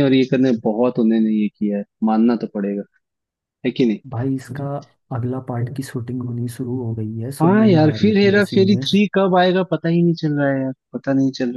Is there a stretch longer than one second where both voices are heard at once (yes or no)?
yes